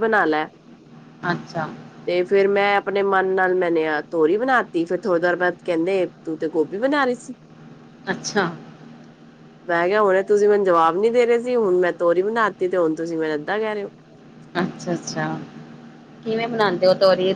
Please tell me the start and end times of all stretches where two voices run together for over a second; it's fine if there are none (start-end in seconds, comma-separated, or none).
none